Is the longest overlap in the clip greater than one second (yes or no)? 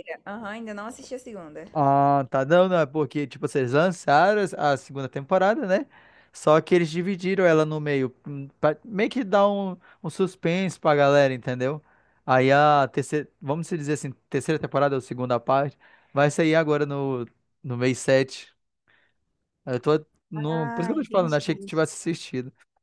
yes